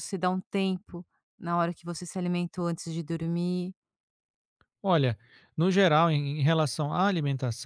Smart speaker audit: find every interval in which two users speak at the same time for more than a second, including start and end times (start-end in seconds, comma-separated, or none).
none